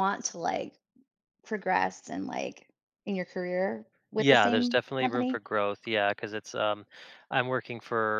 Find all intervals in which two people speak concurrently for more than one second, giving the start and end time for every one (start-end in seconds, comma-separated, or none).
4.2-5.4